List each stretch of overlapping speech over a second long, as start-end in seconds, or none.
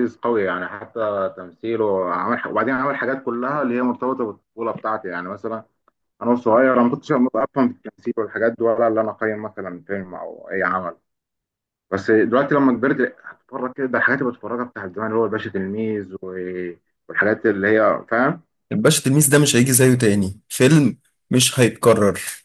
none